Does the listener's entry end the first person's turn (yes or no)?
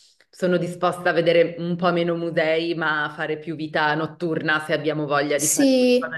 yes